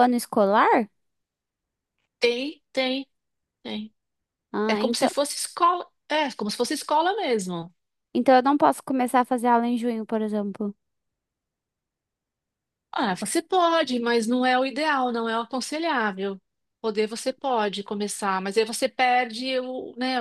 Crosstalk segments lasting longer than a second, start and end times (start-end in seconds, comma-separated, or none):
none